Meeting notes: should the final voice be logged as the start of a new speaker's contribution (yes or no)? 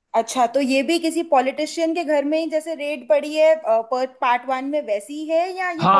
yes